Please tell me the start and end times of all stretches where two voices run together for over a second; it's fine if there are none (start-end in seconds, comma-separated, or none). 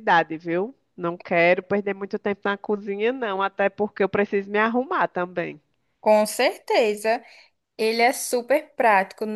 none